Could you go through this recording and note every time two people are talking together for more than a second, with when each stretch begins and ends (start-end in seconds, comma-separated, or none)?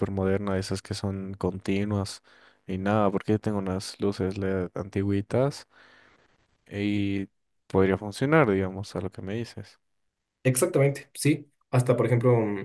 none